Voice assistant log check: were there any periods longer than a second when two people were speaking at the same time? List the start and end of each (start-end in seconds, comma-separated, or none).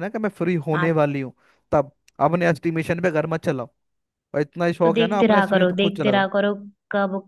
4.8-6.2